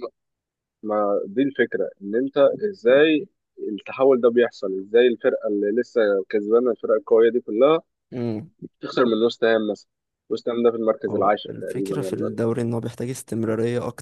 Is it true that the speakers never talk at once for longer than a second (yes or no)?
no